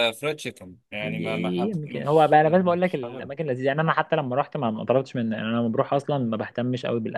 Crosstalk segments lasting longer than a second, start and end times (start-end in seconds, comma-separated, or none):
1.0-3.3